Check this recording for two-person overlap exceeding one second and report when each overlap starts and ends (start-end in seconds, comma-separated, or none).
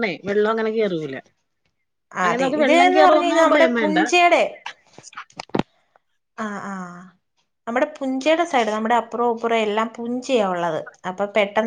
2.2-4.0